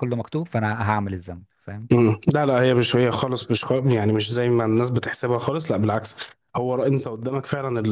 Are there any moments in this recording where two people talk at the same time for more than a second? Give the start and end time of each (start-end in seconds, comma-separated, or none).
none